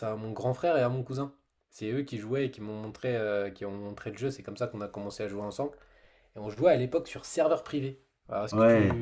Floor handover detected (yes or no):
yes